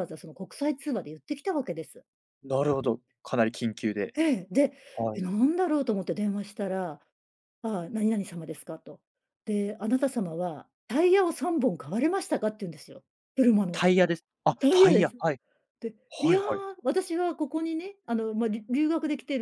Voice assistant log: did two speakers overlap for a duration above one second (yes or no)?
no